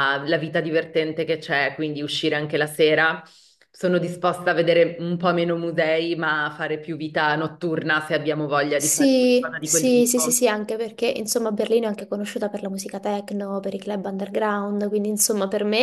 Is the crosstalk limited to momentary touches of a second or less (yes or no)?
no